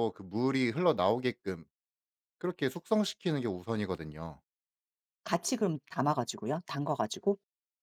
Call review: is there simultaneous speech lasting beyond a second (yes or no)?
no